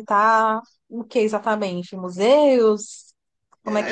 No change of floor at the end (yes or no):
no